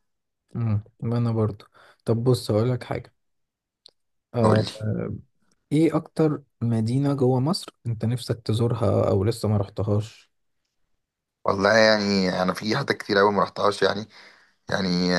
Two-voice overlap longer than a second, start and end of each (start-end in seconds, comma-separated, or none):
none